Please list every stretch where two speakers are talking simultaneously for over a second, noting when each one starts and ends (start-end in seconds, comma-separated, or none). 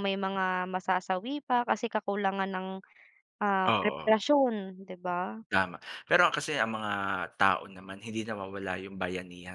none